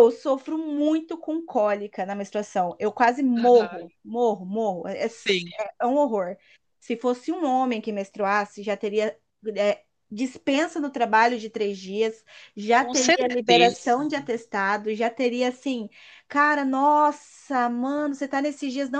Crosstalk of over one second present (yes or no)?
yes